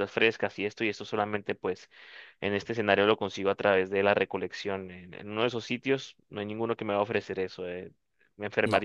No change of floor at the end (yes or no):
yes